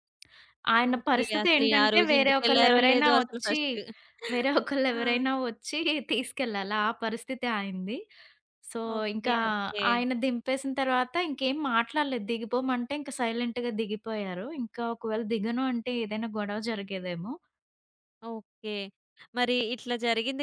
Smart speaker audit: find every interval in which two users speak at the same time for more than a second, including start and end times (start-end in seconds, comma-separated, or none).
0.9-3.6